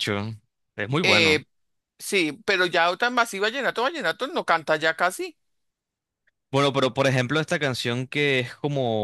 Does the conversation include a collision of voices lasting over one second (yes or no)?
no